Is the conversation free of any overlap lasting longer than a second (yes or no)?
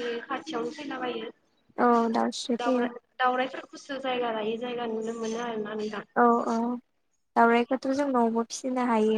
yes